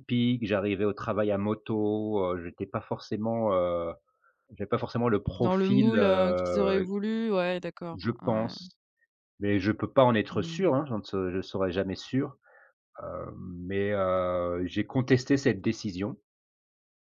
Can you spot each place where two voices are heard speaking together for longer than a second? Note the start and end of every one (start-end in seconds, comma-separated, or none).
5.4-6.9